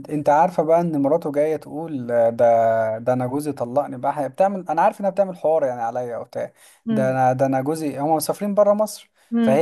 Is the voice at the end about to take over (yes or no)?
no